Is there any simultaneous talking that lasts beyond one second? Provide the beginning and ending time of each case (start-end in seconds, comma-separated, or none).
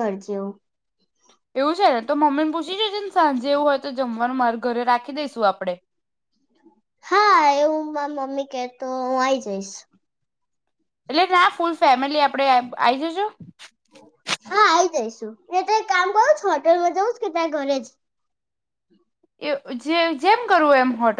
none